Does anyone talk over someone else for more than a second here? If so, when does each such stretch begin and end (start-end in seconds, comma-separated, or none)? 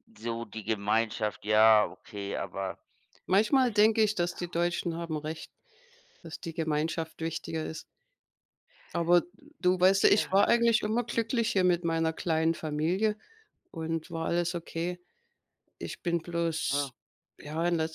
10.0-11.4